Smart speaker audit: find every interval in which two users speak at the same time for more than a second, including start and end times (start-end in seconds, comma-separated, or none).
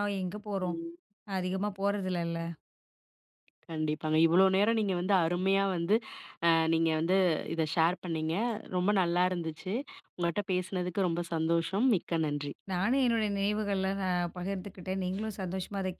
none